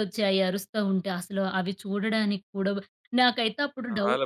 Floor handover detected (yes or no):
no